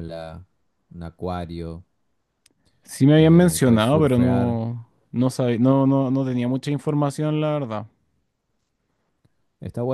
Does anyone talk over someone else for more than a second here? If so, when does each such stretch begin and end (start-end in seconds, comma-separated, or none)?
3.1-4.6